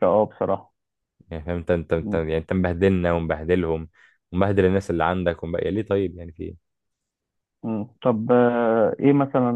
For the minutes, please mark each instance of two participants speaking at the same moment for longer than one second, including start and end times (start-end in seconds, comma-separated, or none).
none